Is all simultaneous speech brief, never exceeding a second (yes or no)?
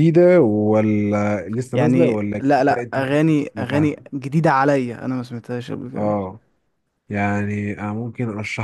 no